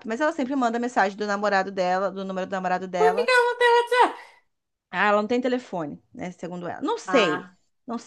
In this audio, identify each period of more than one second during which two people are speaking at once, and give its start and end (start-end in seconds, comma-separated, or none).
none